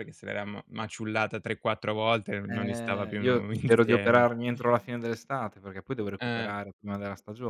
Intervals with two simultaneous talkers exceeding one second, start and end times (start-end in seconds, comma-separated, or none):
2.5-4.3